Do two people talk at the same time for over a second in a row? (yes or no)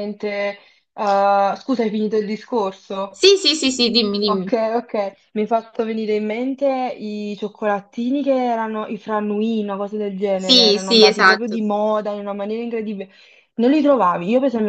yes